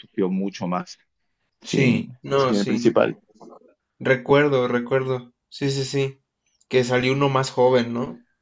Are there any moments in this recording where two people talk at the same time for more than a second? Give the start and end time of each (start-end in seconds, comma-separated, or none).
1.6-2.9